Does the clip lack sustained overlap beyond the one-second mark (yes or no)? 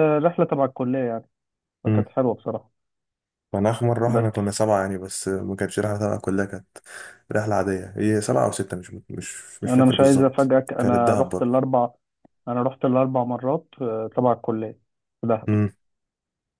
no